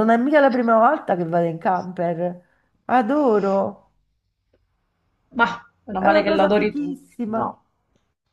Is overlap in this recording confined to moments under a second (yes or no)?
no